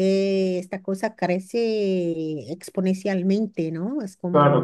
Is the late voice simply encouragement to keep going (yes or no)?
no